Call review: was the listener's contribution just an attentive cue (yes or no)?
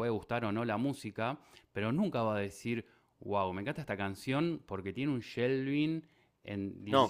yes